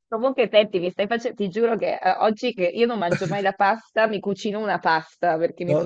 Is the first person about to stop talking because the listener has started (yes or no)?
yes